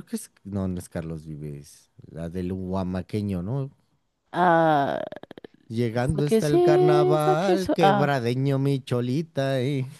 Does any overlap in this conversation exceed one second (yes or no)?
yes